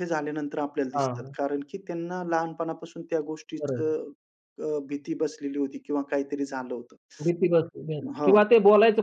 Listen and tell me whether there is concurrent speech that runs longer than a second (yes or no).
no